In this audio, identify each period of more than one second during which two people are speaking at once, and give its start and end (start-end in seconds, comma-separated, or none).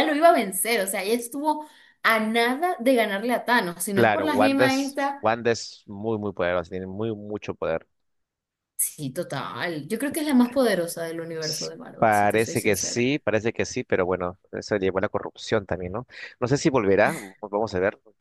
3.9-5.2, 11.4-13.1